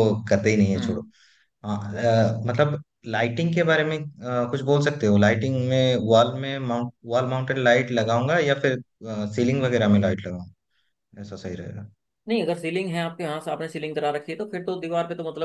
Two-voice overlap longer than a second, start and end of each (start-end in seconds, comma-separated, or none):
none